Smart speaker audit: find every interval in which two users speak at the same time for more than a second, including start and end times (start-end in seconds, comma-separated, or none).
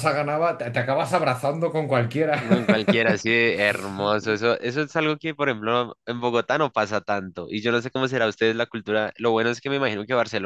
none